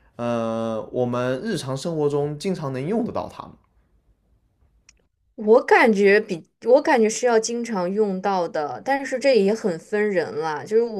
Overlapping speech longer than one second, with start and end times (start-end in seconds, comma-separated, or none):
none